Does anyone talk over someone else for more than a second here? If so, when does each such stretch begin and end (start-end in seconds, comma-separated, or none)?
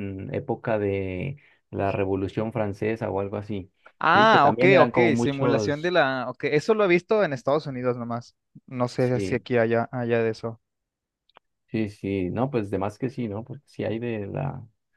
4.1-5.9